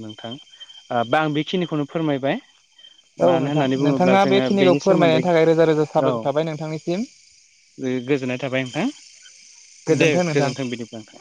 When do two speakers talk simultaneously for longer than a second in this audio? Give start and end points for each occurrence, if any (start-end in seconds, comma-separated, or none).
3.3-5.2